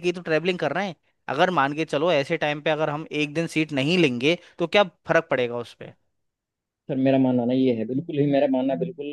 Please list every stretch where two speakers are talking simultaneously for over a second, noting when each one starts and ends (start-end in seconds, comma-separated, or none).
none